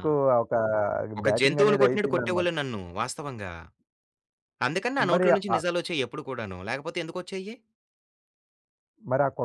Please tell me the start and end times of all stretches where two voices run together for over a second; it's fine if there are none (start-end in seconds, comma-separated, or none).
1.3-2.5